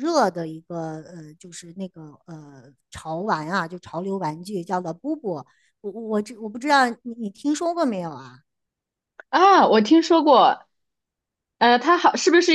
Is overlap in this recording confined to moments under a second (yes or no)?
yes